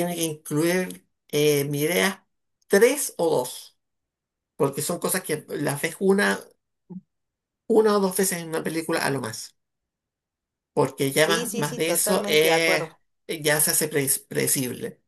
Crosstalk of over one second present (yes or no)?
yes